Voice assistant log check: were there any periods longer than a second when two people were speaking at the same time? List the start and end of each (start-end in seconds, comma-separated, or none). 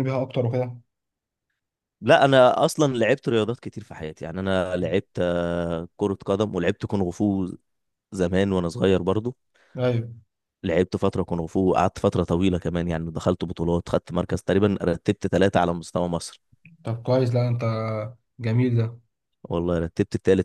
none